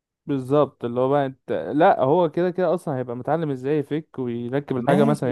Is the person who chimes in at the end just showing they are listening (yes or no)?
no